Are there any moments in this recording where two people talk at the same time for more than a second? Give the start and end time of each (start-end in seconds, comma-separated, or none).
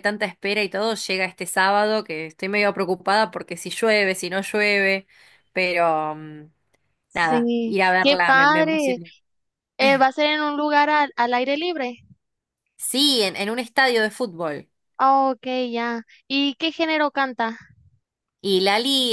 7.1-9.0